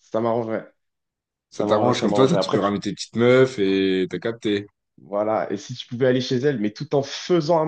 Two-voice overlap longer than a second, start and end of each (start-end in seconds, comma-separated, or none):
1.5-2.7